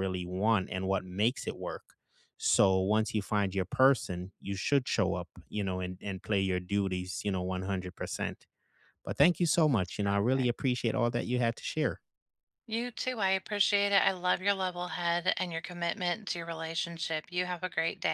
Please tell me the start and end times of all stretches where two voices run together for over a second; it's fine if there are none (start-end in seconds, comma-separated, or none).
none